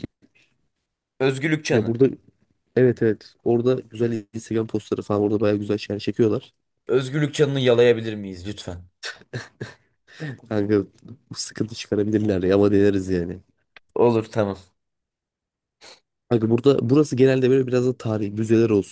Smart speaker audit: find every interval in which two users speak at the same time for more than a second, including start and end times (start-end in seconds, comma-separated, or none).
none